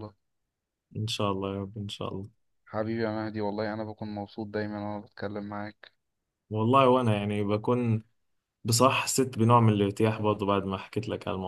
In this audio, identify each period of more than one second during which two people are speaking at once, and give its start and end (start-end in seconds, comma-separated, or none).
none